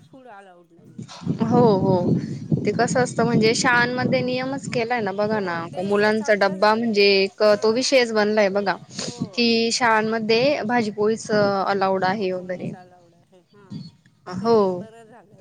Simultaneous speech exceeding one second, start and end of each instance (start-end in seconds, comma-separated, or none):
5.3-8.0